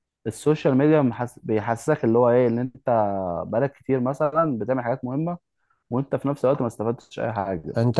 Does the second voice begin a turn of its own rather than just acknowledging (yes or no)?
yes